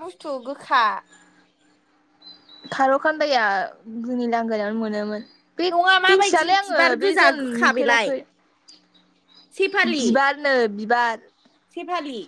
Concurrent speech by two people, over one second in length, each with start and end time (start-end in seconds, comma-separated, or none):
6.1-8.1